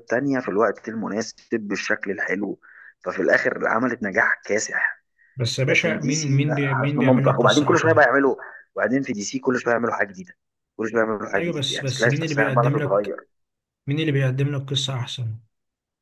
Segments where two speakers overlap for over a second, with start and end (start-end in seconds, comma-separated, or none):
5.6-8.0, 11.3-13.1